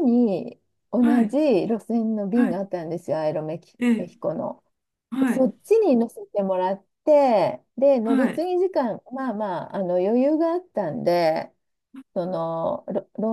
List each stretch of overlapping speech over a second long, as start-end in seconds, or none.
none